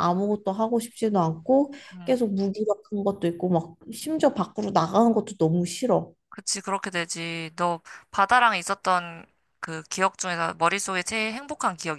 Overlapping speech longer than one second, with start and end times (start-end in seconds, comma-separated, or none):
none